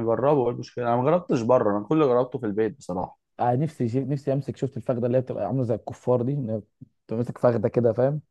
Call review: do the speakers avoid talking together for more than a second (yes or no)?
yes